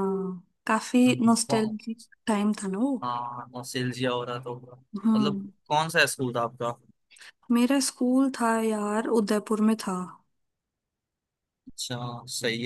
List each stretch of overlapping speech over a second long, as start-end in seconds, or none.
none